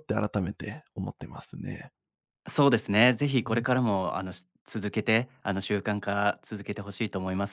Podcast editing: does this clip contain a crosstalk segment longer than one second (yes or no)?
no